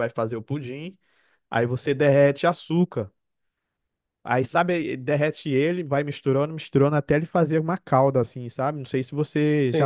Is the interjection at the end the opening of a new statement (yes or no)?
yes